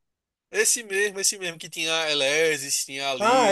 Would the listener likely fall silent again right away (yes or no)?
no